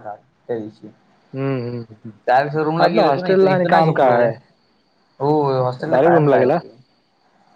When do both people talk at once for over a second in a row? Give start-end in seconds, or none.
2.8-4.2